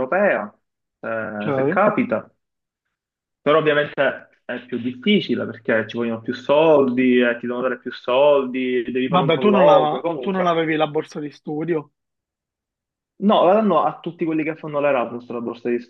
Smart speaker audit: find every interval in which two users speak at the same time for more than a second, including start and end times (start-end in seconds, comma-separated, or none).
9.0-10.6